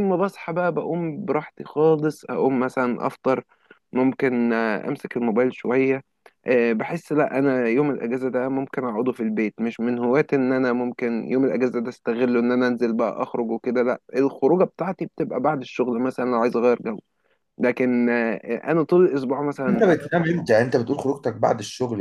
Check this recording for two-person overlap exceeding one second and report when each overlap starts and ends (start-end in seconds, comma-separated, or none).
none